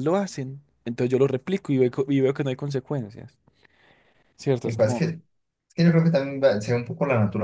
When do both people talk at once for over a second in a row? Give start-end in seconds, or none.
none